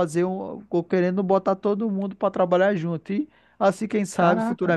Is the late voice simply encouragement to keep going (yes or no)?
yes